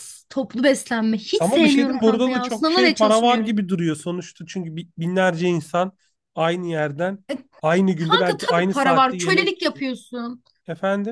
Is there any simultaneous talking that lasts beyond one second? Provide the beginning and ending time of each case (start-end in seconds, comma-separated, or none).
1.4-3.5, 8.0-9.7